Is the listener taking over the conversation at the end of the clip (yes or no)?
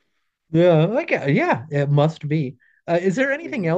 no